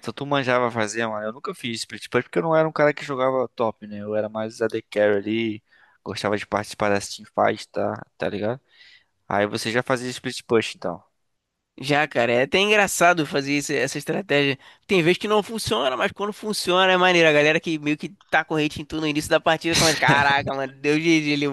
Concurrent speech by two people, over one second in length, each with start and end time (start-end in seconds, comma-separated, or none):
none